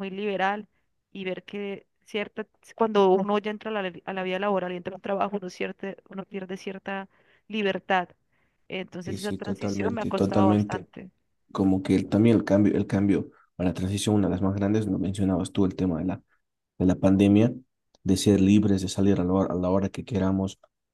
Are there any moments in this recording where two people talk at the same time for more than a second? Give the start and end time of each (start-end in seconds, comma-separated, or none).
9.0-10.9